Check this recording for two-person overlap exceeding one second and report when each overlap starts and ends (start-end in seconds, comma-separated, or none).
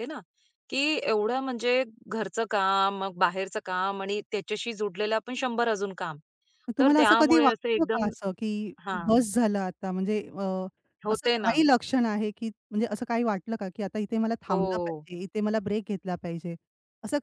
6.8-8.0